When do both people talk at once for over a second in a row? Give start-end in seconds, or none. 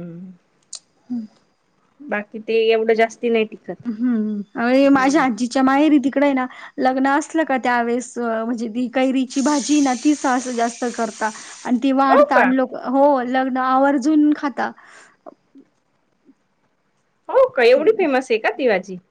none